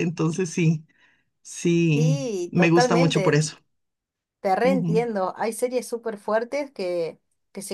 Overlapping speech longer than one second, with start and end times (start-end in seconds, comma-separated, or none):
1.9-3.4